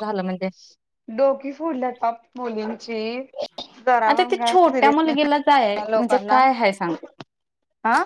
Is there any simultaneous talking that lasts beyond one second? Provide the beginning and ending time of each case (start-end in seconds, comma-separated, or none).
4.1-6.4